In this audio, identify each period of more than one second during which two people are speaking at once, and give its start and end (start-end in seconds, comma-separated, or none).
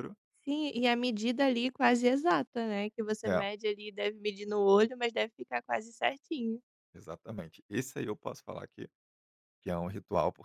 none